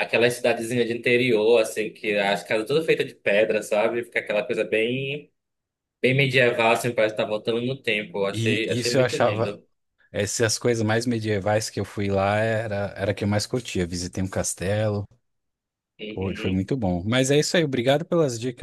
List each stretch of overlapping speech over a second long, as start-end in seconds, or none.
8.3-9.6